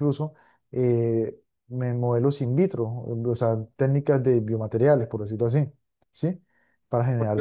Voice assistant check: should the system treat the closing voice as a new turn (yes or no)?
yes